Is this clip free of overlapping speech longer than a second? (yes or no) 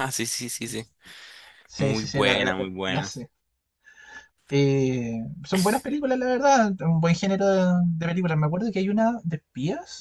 no